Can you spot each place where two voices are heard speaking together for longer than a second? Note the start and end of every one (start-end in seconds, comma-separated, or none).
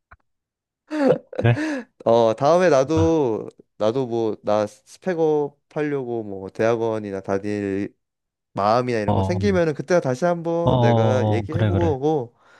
10.6-11.9